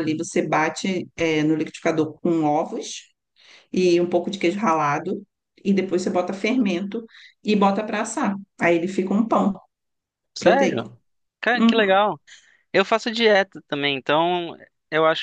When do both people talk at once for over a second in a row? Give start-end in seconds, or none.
none